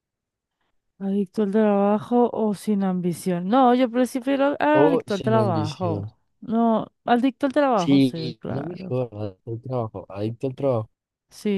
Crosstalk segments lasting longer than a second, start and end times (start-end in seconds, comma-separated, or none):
4.7-6.1, 7.7-9.0